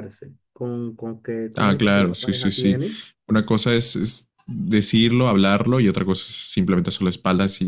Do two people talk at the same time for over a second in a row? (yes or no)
yes